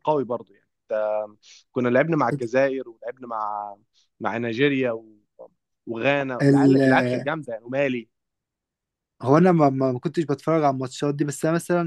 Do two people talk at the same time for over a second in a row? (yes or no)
no